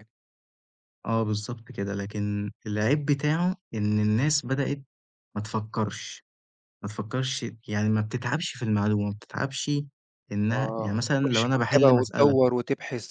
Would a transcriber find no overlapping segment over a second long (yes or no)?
no